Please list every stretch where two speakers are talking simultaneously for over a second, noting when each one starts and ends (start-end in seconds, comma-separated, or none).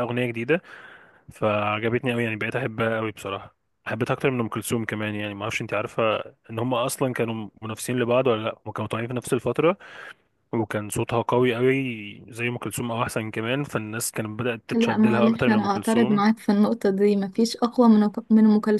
14.7-16.2